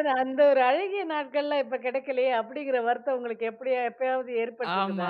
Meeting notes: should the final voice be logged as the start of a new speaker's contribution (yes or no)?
yes